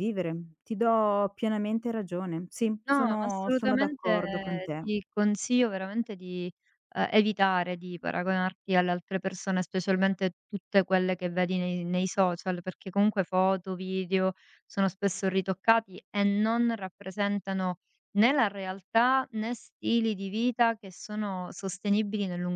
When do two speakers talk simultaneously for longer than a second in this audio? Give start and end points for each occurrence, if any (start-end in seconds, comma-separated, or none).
2.9-4.8